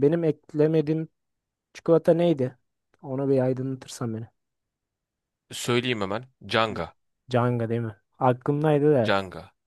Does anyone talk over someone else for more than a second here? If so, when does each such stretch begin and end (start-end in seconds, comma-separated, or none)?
none